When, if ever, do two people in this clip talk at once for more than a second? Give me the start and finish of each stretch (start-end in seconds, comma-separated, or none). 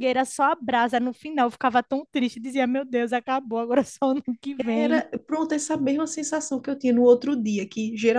none